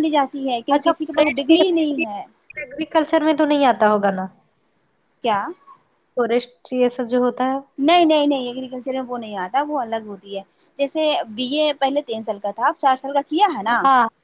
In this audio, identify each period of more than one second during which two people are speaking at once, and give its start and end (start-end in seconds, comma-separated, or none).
0.7-2.0